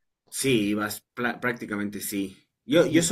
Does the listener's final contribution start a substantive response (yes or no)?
no